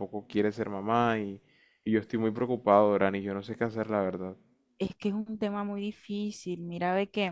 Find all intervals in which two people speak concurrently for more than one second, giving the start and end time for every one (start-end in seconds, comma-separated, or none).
none